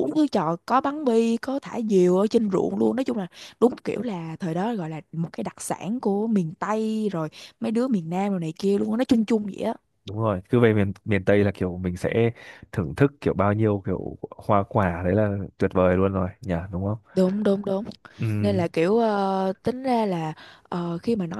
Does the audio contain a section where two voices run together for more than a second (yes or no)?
no